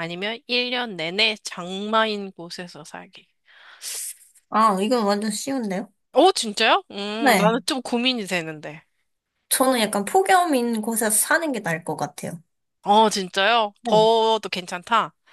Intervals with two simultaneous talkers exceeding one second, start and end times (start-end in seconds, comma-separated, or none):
none